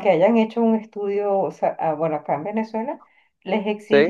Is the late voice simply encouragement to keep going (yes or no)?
yes